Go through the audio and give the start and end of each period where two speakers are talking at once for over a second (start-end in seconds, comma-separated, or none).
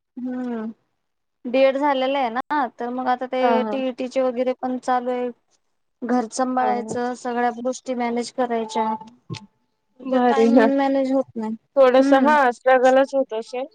none